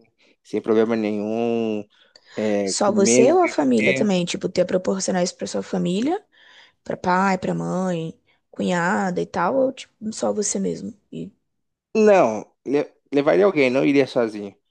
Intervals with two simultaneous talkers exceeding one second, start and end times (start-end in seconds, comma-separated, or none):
2.6-4.1